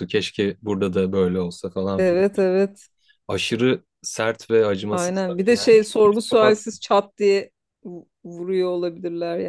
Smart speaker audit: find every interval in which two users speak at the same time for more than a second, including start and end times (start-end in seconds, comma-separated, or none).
4.9-6.6